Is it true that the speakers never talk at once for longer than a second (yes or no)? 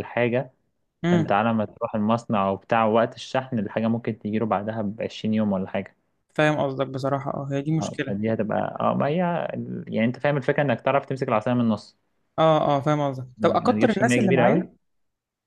no